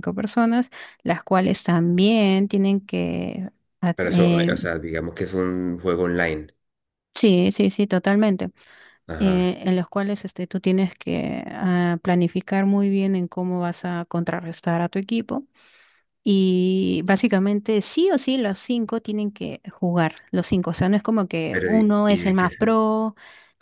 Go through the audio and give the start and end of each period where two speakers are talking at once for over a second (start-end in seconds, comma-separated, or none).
21.5-22.8